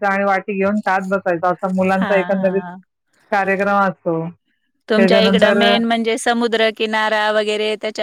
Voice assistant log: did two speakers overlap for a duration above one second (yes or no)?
no